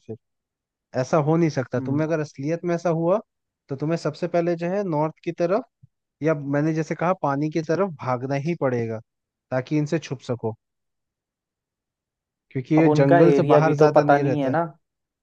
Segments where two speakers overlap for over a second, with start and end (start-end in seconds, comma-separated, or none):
12.8-14.6